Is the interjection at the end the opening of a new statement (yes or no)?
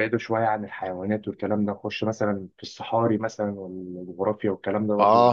yes